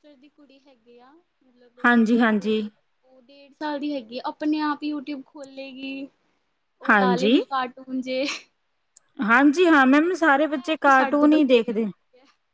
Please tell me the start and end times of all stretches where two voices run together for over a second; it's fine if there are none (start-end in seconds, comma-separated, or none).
10.0-11.8